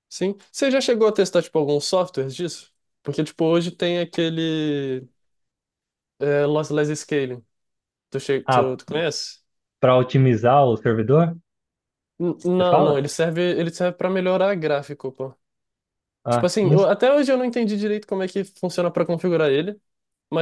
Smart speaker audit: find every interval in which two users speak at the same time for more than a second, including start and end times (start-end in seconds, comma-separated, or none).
none